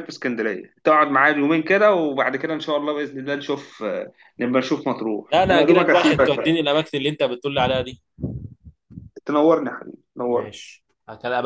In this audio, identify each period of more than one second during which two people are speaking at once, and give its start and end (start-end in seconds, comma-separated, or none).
5.3-6.5